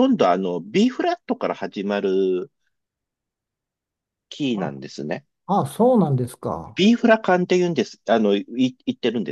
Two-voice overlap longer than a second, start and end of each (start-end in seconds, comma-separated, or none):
none